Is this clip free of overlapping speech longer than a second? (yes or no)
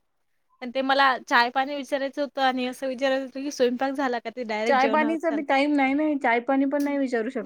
yes